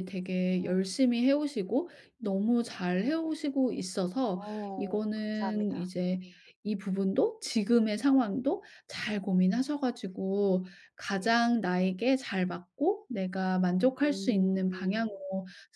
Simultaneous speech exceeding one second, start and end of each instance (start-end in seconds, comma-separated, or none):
4.3-6.2, 13.9-15.2